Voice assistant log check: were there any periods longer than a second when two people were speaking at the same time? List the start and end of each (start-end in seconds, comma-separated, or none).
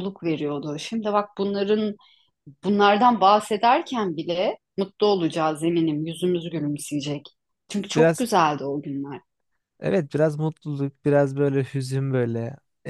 none